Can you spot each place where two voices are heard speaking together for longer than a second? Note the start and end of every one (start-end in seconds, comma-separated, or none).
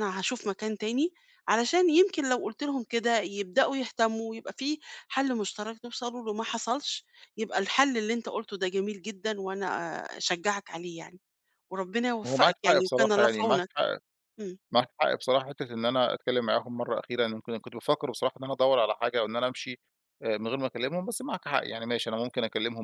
12.3-13.7